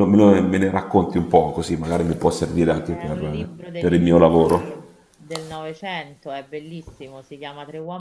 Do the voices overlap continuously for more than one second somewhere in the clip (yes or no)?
yes